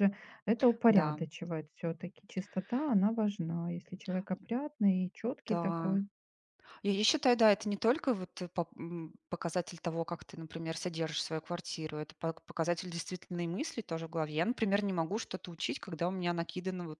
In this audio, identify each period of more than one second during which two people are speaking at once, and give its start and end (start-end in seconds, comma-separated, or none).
none